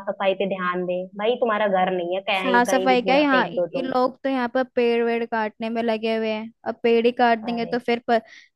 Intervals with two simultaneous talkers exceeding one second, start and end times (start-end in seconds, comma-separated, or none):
2.4-3.9